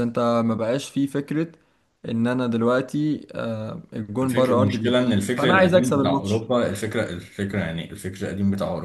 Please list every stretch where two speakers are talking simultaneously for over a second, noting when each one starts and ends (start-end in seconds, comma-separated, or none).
4.2-6.5